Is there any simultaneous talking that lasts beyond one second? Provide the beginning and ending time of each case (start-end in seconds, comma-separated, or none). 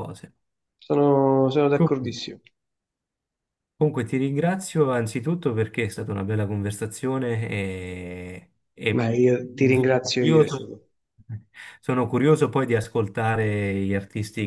8.9-10.8